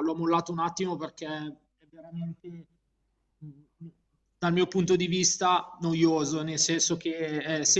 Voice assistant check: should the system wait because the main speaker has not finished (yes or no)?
yes